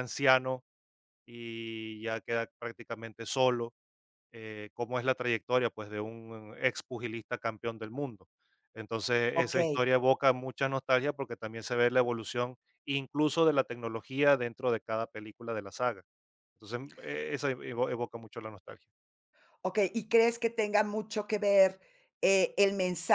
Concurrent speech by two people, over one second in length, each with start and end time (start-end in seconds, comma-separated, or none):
none